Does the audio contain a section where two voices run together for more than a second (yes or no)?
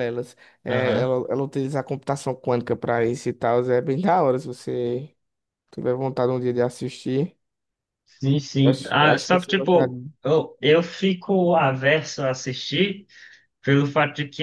yes